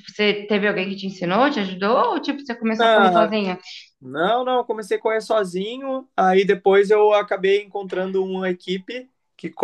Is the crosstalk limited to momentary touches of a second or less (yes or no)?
yes